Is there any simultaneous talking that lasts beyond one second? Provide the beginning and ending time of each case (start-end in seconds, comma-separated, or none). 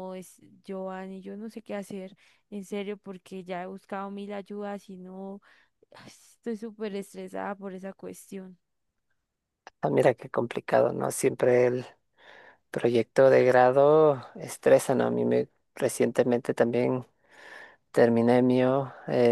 none